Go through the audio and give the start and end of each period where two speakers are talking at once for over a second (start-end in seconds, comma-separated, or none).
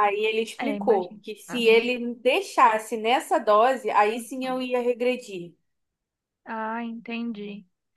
0.6-1.9